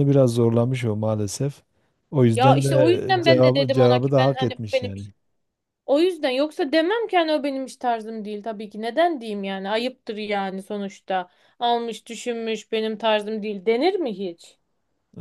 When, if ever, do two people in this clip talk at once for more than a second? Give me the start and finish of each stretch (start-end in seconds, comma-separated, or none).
2.3-5.1